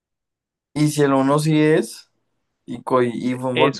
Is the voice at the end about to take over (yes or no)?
yes